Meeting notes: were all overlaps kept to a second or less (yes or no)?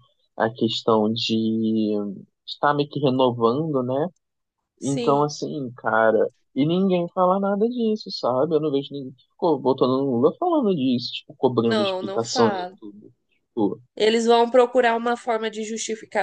no